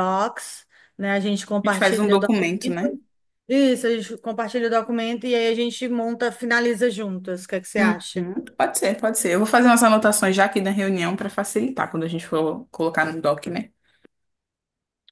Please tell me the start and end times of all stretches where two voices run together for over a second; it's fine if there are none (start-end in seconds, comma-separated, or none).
1.6-2.9